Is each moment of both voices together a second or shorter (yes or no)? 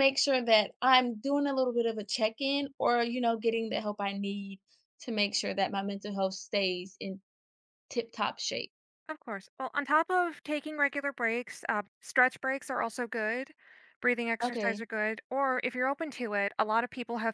yes